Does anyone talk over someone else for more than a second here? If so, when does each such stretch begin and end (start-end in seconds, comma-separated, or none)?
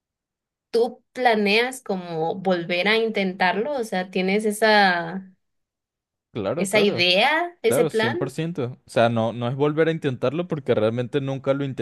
none